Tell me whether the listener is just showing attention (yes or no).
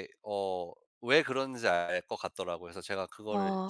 no